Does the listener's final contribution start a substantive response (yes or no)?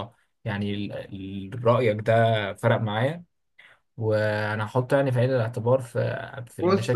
yes